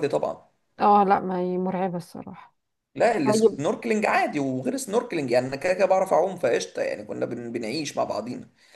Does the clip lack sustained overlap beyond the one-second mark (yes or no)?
yes